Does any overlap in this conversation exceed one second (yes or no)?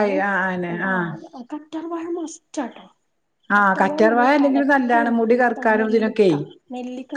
yes